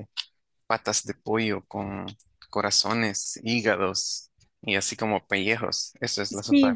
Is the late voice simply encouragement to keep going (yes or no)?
no